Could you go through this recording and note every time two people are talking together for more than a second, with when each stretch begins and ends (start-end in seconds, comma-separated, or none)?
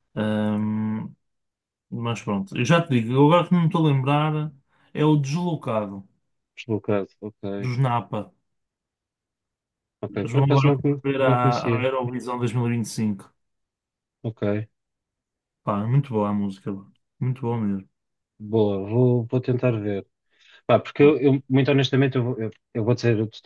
10.1-11.9